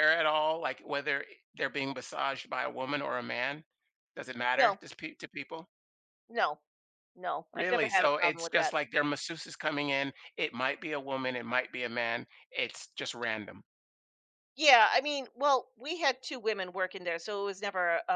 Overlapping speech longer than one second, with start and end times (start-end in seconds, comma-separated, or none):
7.5-8.7